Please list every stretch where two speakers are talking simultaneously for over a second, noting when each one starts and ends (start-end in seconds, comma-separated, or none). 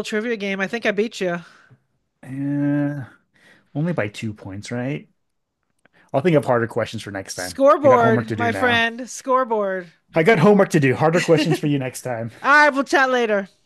7.3-8.8